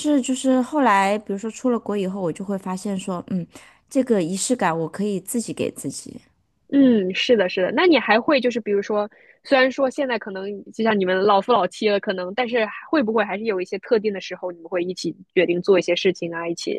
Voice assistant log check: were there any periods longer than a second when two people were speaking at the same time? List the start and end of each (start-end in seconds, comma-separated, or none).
none